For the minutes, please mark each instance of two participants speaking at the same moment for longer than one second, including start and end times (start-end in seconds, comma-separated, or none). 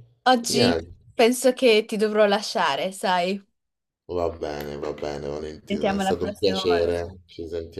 5.7-6.9